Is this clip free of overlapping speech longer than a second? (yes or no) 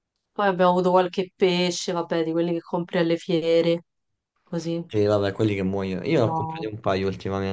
yes